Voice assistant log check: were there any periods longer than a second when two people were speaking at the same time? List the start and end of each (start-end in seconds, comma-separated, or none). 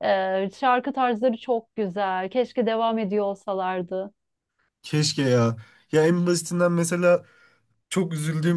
none